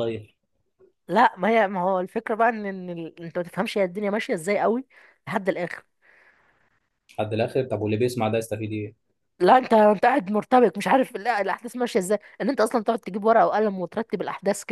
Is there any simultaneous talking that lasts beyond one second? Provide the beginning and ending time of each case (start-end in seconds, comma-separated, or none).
none